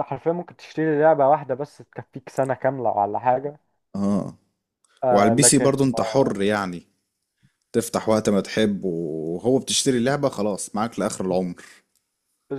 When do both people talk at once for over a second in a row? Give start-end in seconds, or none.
none